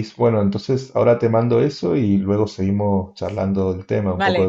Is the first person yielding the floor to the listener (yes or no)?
yes